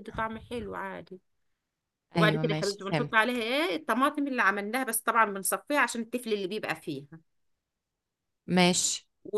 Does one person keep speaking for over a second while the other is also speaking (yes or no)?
yes